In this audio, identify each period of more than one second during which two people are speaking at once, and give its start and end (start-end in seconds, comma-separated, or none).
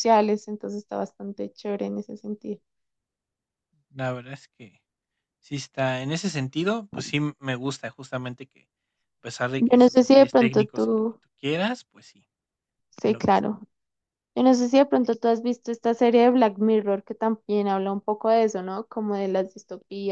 9.6-11.2